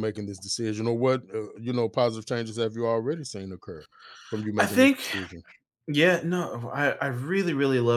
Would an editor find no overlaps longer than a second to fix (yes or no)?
yes